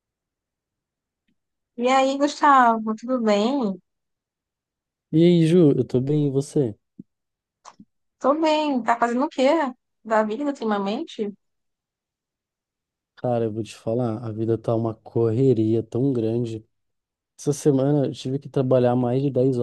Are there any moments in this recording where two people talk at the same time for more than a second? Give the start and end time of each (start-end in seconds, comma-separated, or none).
none